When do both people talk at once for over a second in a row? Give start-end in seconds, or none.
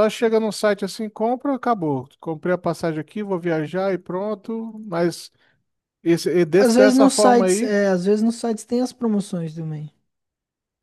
6.6-7.8